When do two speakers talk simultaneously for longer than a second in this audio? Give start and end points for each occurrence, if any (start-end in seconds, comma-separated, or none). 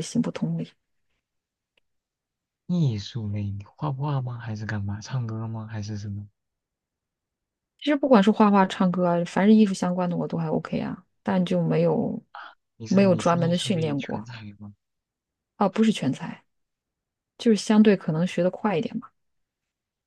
12.9-14.2